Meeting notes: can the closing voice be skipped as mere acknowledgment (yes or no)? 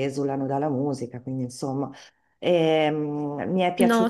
yes